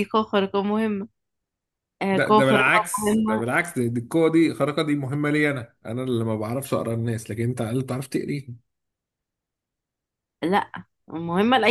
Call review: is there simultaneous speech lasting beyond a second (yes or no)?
yes